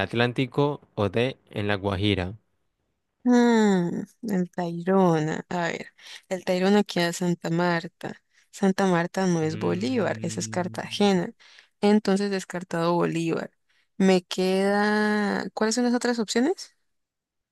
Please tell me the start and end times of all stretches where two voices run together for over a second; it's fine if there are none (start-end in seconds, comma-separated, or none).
9.4-10.8